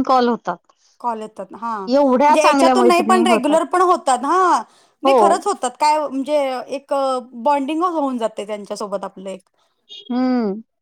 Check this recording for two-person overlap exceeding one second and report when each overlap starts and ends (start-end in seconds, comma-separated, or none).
1.9-3.6